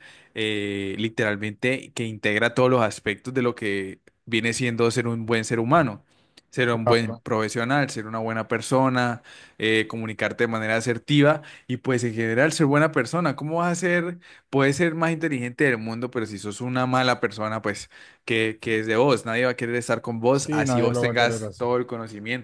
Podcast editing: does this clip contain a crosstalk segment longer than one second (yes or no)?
yes